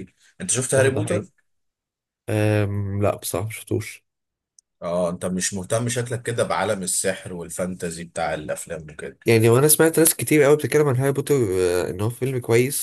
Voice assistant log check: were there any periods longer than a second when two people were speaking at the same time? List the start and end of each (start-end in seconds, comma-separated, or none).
none